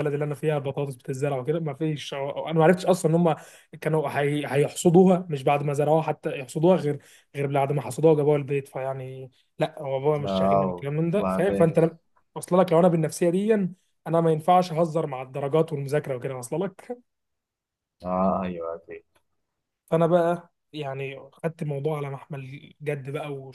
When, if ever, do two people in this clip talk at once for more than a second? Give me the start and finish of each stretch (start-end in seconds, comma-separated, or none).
10.2-11.7